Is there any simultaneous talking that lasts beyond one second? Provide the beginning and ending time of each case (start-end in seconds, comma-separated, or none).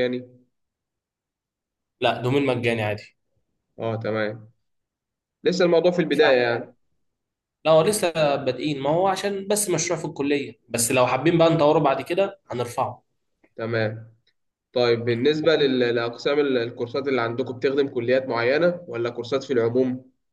none